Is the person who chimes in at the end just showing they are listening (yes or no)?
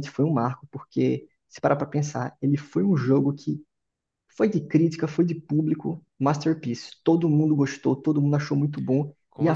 yes